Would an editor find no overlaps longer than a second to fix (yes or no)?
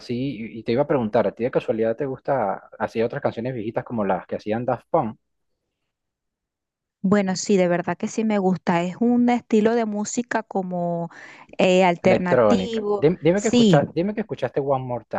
no